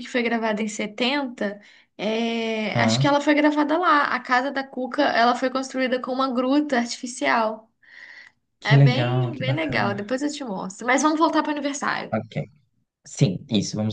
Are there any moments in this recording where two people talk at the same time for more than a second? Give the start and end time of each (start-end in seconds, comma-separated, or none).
8.6-10.2